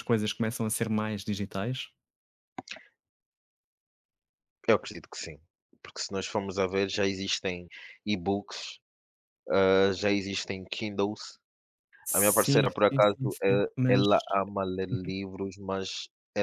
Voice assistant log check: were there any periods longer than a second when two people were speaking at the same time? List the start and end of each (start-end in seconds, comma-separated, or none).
12.1-14.1